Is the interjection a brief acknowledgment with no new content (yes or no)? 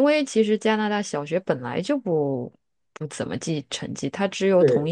yes